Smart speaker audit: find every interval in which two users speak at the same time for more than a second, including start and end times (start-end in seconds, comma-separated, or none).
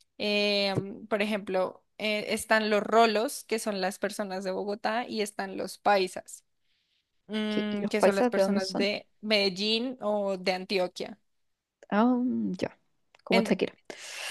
7.5-8.9